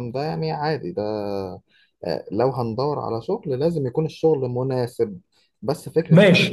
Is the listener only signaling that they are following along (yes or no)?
no